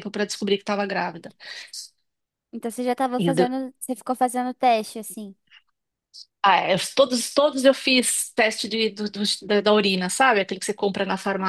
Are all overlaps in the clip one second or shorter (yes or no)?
yes